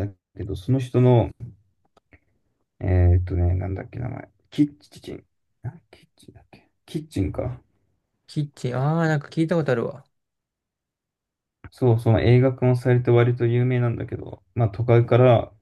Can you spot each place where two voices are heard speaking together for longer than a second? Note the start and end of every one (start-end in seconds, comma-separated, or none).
none